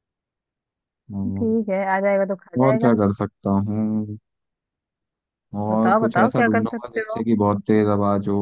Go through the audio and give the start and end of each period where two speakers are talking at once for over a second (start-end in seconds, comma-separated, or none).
5.7-7.2